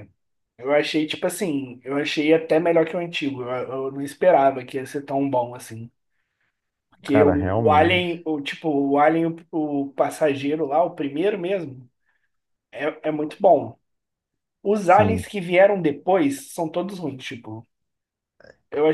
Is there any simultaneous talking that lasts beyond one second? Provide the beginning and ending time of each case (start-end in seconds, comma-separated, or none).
7.1-8.3